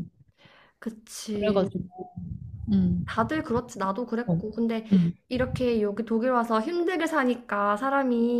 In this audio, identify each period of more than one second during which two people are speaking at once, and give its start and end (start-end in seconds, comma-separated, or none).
none